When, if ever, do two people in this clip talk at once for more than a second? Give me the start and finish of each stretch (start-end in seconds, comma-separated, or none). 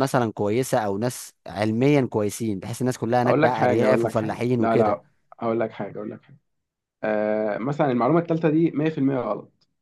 3.3-5.0